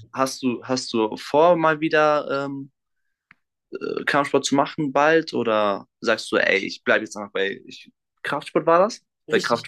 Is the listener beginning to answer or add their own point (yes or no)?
yes